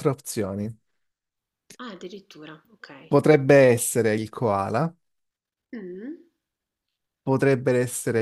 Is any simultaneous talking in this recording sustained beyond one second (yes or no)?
no